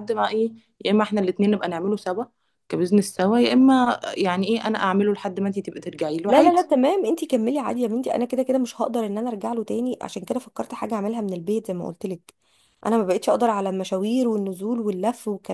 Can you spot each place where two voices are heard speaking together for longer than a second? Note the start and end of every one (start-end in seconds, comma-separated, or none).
none